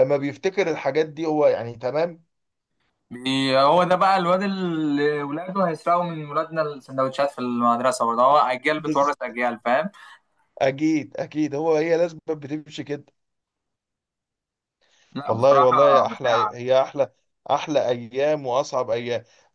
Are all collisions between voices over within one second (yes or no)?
no